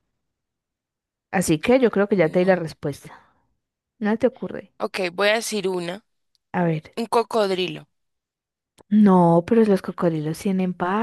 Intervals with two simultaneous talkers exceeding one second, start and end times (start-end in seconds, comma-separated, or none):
none